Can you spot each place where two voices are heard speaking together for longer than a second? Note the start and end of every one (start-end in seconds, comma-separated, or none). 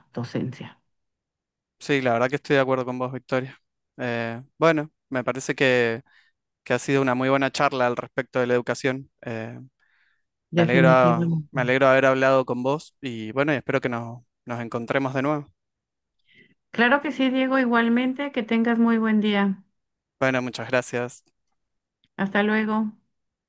10.5-11.8